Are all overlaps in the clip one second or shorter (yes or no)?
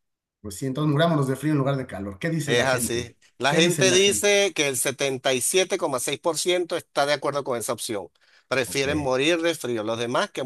no